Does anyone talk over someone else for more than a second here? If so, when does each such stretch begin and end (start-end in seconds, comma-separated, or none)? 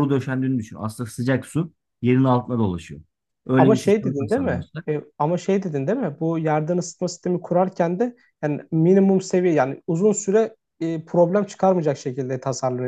3.6-4.8